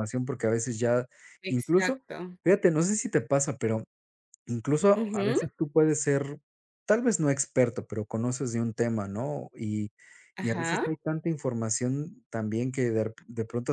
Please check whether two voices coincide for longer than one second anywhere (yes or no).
no